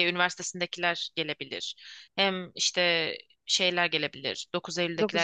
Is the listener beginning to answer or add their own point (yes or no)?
no